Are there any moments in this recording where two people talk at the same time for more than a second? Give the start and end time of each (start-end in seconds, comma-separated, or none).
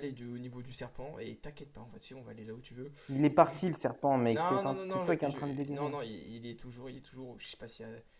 4.3-5.9